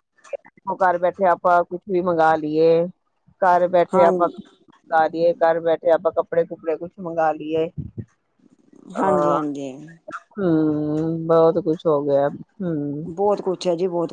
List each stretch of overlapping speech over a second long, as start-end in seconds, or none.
none